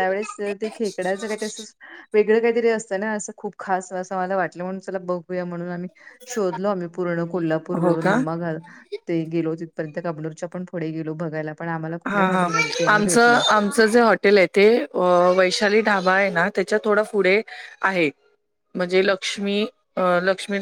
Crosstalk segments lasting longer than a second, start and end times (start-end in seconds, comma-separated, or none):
12.1-13.4